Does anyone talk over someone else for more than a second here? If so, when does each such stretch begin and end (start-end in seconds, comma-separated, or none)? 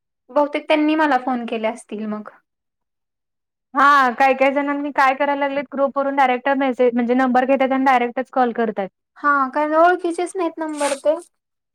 none